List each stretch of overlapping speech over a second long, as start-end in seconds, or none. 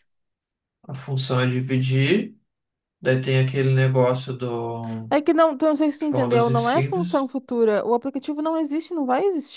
6.0-7.3